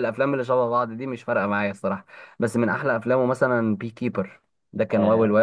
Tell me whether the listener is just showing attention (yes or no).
no